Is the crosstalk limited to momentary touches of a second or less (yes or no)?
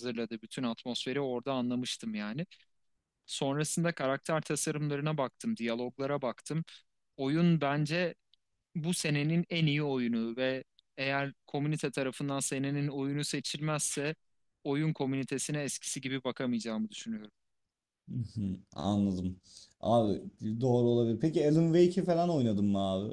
yes